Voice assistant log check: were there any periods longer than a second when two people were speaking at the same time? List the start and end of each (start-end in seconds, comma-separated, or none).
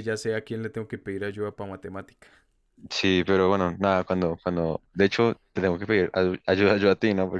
none